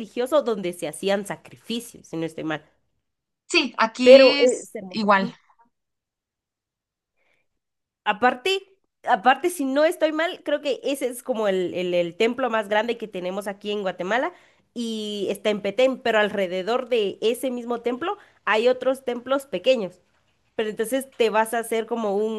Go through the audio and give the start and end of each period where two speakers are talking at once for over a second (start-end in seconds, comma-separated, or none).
4.0-5.3